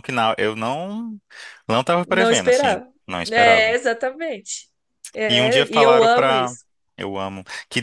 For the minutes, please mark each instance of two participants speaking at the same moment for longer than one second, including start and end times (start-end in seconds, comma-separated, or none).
2.1-3.8, 5.3-6.6